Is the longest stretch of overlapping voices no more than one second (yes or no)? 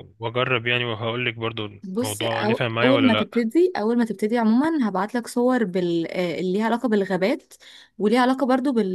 no